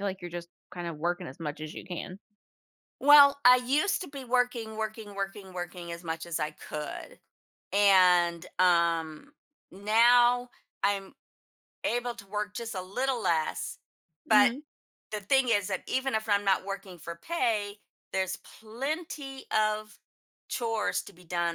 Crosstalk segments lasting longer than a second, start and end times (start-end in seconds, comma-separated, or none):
none